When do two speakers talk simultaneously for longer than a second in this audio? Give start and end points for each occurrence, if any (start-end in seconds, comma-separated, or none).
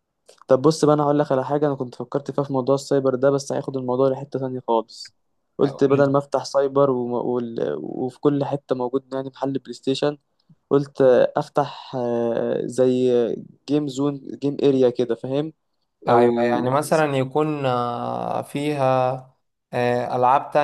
none